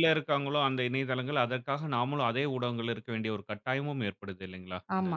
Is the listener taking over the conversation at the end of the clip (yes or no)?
yes